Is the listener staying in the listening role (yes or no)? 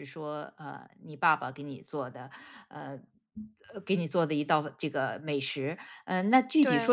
yes